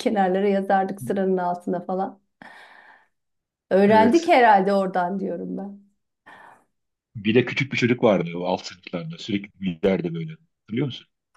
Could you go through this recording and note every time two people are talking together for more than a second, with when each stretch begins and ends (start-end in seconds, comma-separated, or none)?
none